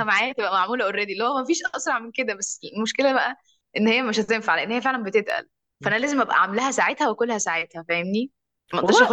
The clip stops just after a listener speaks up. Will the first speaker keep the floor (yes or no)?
yes